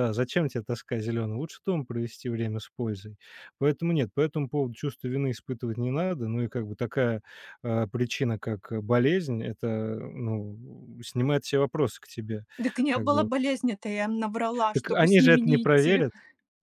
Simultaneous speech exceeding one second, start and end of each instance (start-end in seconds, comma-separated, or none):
14.7-16.1